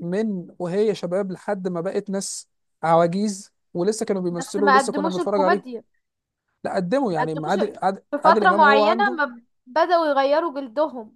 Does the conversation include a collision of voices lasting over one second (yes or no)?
yes